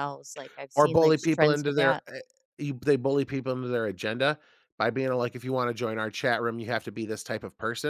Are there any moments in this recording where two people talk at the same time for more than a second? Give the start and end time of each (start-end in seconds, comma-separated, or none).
0.8-2.0